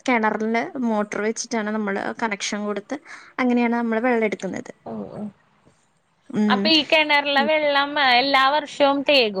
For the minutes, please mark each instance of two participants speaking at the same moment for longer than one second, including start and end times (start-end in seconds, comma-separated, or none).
none